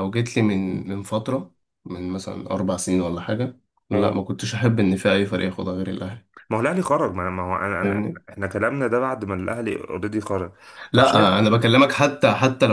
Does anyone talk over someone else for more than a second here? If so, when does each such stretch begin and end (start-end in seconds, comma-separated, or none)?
none